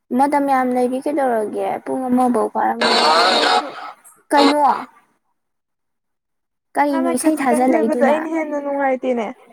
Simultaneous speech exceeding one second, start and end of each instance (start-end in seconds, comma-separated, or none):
6.9-8.2